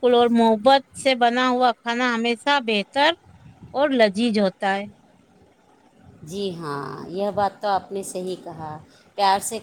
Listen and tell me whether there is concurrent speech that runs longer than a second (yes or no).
no